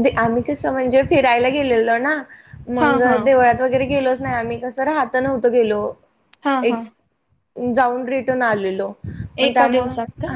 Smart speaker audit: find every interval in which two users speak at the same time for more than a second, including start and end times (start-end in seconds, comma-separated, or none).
none